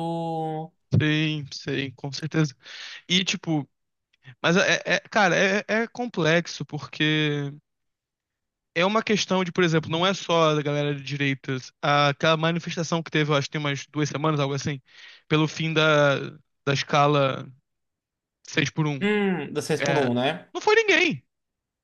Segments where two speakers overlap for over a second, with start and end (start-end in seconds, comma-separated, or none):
none